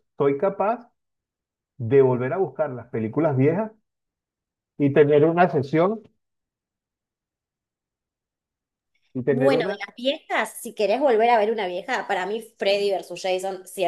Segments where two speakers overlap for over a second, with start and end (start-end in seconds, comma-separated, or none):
none